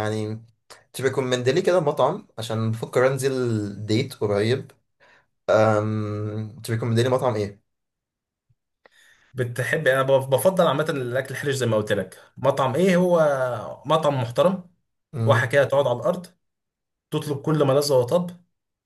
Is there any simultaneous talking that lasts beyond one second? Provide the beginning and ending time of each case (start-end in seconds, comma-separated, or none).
none